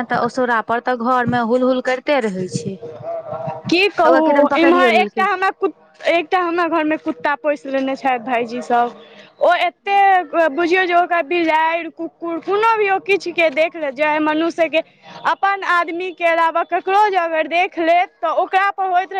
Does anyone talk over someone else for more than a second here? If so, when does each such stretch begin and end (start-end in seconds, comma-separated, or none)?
4.1-5.3